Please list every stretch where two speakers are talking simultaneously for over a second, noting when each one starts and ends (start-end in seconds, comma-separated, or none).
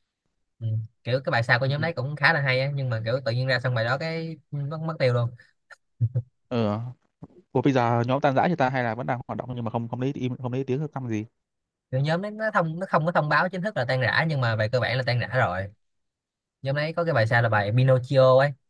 none